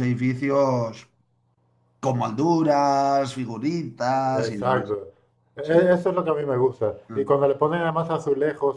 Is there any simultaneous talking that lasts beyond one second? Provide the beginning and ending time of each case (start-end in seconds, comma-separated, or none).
none